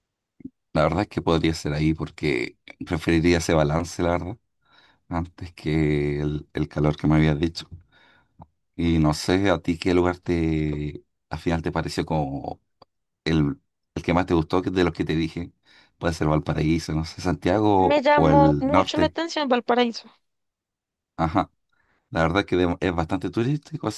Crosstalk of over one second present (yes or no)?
yes